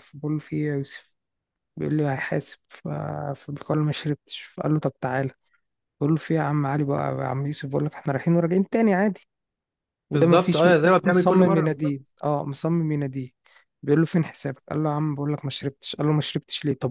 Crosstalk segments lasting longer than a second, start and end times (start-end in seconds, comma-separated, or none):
10.1-12.1